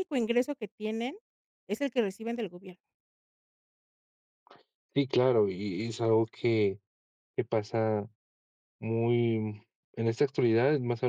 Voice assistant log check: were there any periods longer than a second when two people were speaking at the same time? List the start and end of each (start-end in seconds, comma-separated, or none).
none